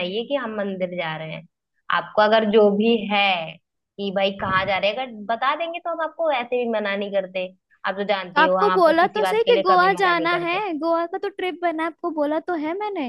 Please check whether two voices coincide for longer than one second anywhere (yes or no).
yes